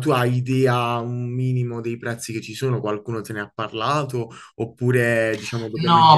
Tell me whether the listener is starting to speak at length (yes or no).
yes